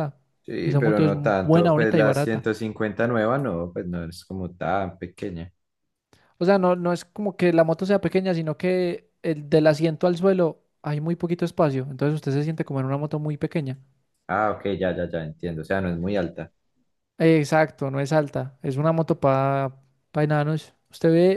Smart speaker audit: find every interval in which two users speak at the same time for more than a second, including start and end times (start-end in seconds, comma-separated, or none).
0.6-2.5